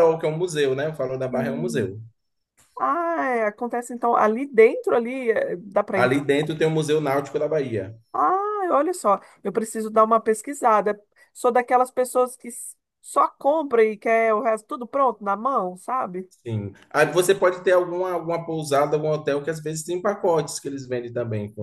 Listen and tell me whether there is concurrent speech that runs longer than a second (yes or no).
no